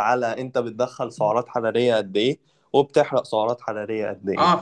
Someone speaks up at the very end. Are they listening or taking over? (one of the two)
taking over